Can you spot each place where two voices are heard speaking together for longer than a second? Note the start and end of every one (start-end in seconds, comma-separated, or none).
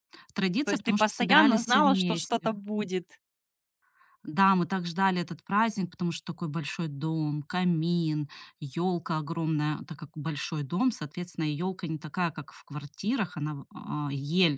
0.7-2.5